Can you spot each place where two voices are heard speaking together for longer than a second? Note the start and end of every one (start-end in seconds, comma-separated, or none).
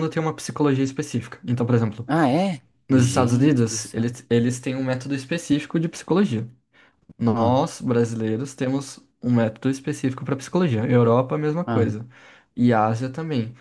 2.9-4.1